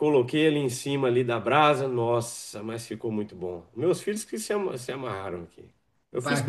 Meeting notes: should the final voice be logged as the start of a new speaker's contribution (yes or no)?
yes